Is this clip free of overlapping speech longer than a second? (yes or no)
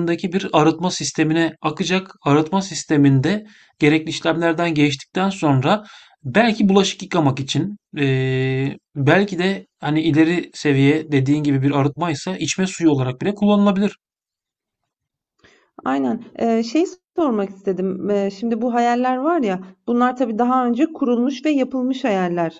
yes